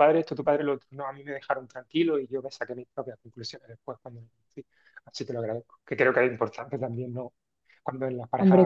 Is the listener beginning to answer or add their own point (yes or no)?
no